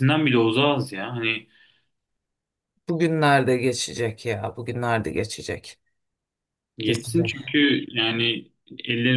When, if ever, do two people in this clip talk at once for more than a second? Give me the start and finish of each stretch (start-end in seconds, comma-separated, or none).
none